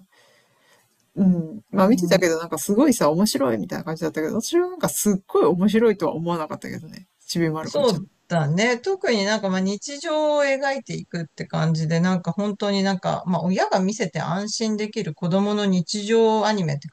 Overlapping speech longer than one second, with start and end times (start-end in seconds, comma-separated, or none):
none